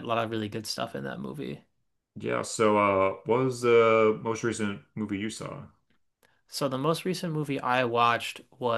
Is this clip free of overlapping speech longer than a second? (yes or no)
yes